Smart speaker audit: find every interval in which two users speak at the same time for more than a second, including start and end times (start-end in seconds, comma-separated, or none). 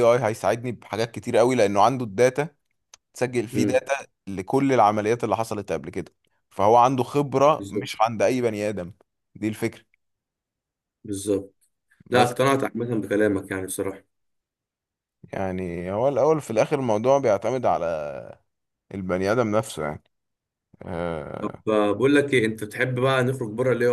none